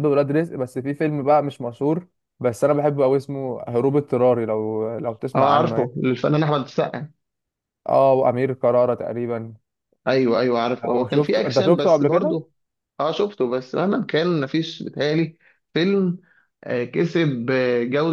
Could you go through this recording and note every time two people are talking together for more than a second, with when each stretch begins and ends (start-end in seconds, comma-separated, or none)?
10.8-12.4